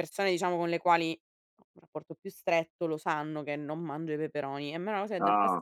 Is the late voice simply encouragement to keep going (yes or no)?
yes